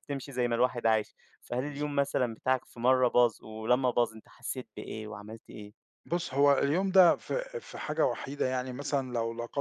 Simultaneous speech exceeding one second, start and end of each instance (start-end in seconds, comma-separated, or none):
none